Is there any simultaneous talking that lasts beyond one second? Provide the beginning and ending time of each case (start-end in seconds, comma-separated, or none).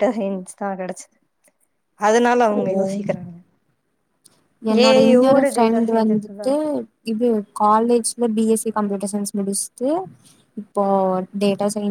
4.9-6.5